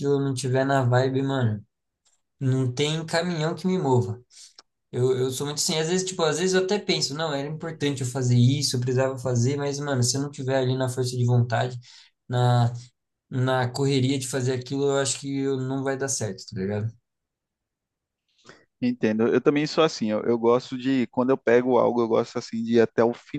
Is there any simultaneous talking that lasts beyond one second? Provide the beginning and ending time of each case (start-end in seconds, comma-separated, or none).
none